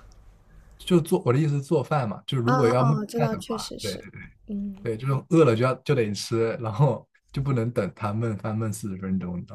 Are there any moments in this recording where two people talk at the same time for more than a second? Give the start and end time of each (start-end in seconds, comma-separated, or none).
2.5-4.0